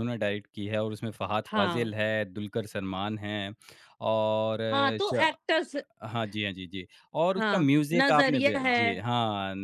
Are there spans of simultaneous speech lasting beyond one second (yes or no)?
yes